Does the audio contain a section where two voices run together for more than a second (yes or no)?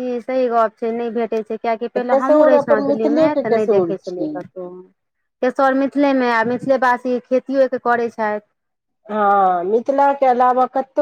yes